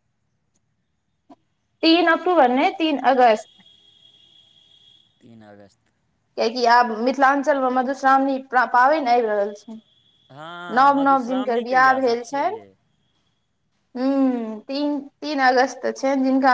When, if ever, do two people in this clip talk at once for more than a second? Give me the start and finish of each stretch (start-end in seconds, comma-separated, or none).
10.8-12.6